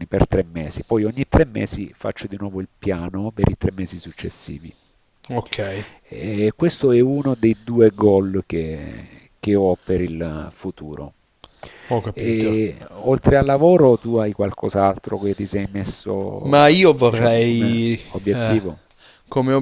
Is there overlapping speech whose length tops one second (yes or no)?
yes